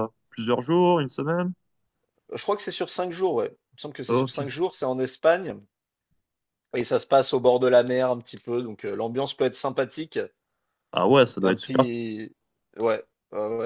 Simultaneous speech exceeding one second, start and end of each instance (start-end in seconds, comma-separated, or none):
none